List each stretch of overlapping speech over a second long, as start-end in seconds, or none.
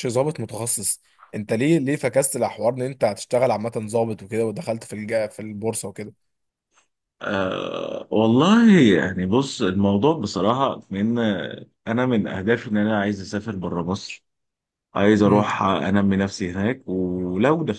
none